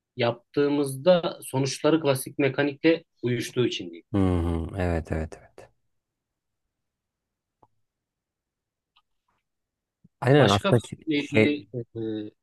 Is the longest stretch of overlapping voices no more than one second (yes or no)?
no